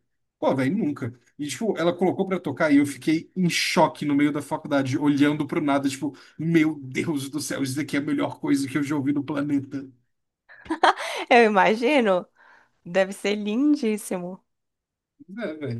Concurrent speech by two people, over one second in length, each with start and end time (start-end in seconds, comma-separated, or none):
none